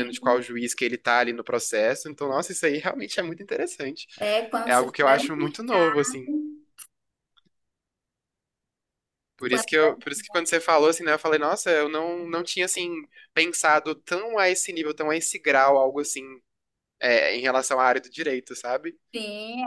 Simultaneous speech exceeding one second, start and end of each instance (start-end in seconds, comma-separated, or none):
4.7-6.2